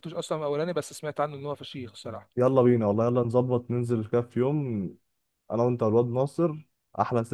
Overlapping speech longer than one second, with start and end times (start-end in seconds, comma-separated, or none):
none